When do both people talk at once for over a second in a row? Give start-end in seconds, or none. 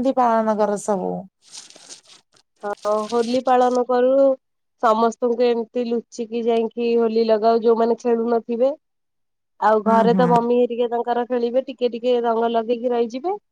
none